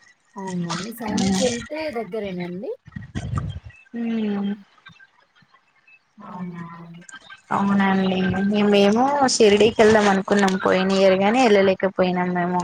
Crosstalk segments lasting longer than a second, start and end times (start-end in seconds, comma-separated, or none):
1.1-2.5